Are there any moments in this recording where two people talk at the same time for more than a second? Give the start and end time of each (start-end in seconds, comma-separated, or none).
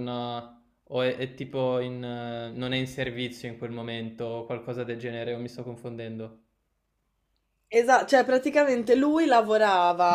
none